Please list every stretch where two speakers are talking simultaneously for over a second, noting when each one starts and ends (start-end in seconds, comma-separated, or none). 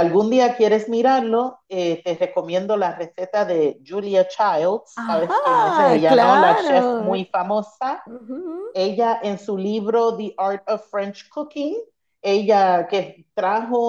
4.9-7.3